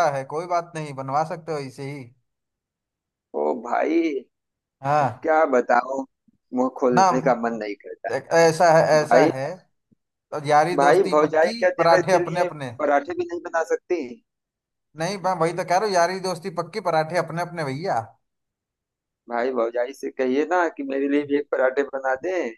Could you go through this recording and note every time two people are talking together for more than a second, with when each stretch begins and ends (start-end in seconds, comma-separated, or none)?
10.8-12.7